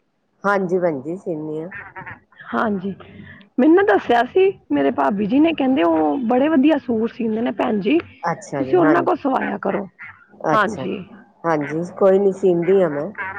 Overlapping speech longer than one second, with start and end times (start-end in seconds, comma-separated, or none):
none